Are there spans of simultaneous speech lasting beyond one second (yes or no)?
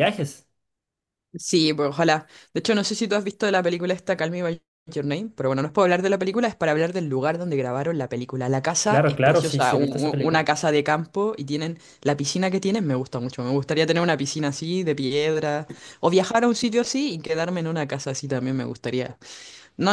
yes